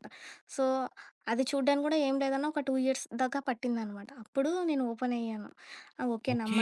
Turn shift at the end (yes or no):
yes